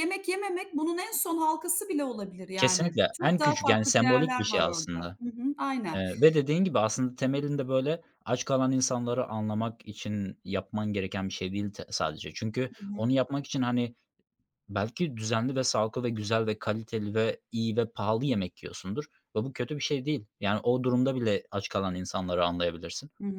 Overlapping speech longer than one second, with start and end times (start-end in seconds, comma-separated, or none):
2.5-5.2